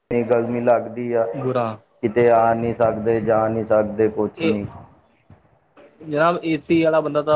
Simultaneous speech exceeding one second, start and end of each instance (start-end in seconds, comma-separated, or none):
none